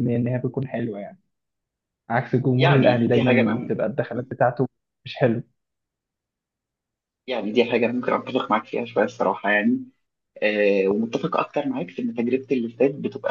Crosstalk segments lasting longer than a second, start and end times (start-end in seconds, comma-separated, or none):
2.6-3.8